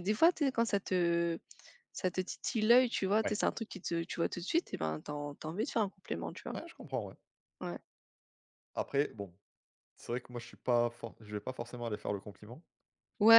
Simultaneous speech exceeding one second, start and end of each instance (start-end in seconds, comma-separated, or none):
none